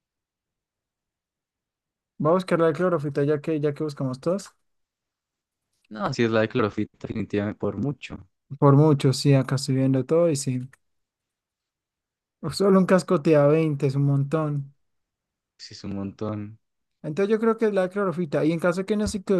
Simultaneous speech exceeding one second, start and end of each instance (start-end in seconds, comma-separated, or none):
none